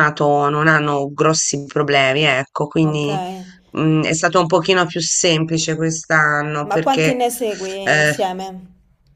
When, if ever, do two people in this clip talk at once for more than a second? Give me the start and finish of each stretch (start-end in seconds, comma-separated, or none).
none